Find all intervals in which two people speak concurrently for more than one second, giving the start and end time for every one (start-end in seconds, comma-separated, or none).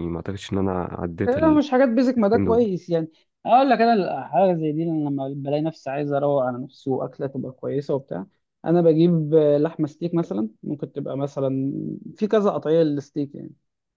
none